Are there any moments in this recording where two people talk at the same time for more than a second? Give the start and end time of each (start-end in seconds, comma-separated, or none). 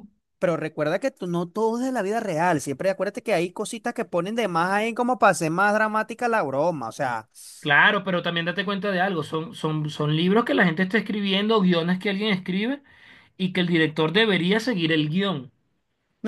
none